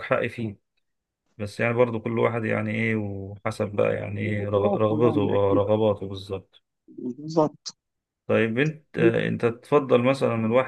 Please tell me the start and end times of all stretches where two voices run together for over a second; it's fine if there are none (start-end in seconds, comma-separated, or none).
4.3-5.6